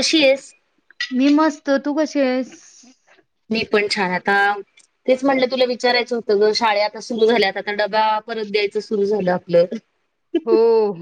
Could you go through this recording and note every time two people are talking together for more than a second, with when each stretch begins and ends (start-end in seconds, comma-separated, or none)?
none